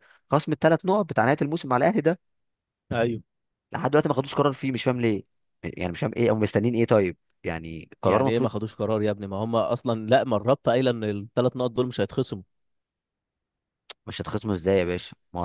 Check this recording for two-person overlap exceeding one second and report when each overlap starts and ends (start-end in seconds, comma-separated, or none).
none